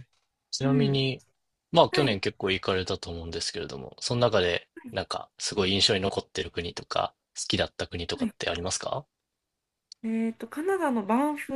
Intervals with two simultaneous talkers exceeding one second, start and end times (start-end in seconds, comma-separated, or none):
none